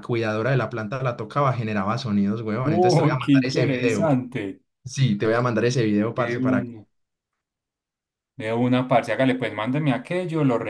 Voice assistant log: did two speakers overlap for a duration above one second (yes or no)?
yes